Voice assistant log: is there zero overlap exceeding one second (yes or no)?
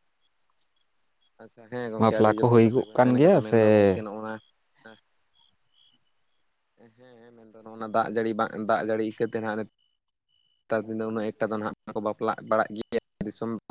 no